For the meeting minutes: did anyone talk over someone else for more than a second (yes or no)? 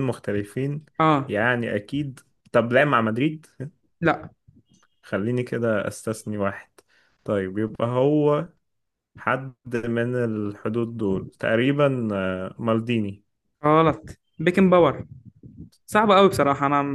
no